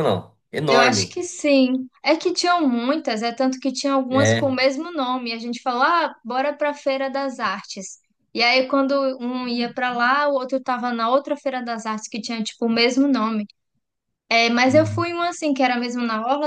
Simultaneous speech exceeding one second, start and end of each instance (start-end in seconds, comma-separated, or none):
none